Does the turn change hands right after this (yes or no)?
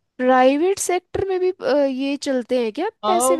yes